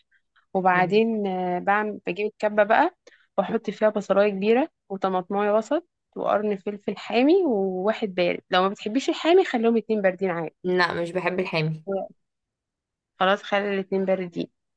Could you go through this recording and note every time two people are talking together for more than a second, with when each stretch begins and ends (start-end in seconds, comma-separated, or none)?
none